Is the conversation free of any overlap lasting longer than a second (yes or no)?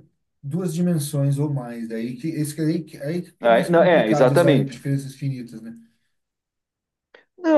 no